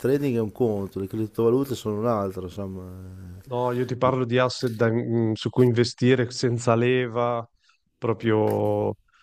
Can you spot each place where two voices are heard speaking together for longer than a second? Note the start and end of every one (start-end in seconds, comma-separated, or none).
none